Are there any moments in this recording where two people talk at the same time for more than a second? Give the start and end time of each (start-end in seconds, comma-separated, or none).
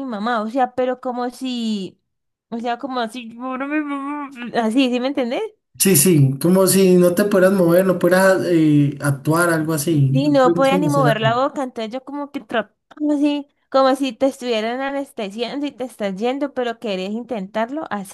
10.1-11.3